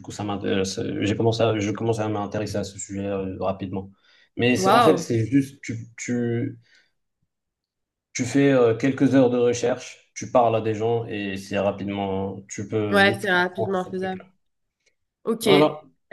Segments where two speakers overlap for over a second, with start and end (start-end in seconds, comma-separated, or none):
12.9-14.2